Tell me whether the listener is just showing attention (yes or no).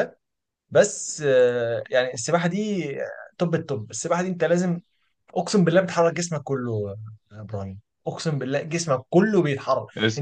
yes